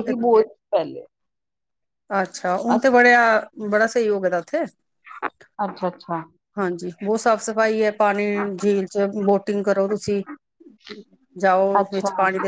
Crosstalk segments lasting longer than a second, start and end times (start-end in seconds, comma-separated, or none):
none